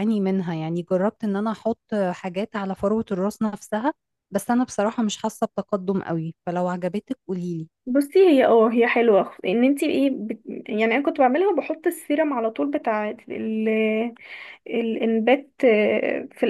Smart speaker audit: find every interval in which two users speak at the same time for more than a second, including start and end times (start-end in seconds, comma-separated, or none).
none